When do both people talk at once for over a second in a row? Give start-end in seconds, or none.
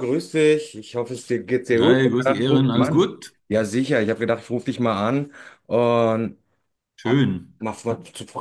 1.8-3.1